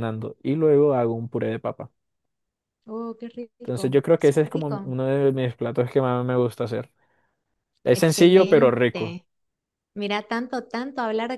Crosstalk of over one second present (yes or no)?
yes